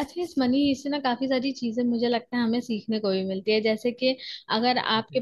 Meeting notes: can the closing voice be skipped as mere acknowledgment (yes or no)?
yes